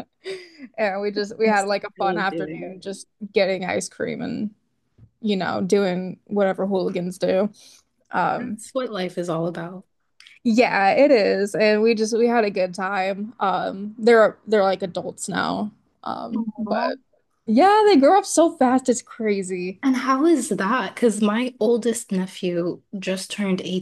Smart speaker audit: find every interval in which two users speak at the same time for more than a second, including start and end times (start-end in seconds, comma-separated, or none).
1.4-2.8